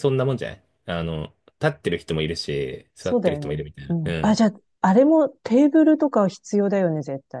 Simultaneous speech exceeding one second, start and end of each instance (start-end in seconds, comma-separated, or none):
3.0-4.5